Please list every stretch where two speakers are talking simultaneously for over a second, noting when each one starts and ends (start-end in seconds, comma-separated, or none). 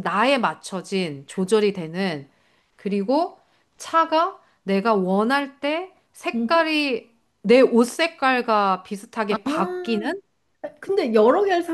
none